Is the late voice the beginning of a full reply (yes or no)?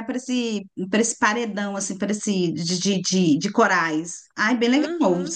yes